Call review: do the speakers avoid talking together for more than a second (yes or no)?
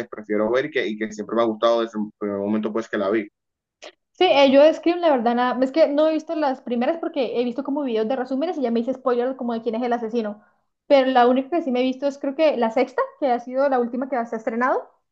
yes